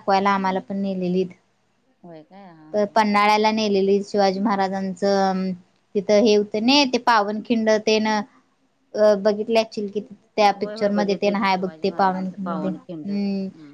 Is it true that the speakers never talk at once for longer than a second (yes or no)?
no